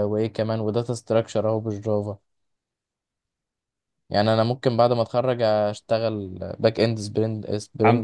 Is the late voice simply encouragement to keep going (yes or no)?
no